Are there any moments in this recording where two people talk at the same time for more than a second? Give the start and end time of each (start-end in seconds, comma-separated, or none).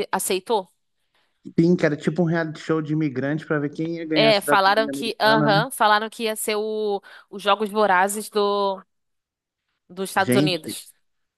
4.1-5.7